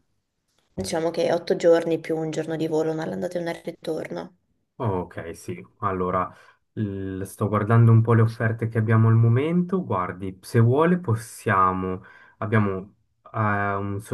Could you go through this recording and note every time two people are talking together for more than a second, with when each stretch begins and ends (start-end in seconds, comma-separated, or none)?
none